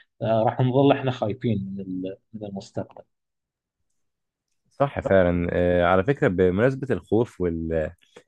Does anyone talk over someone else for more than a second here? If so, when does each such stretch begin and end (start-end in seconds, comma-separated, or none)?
none